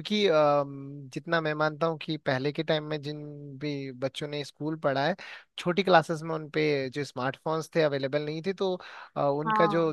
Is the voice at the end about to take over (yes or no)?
no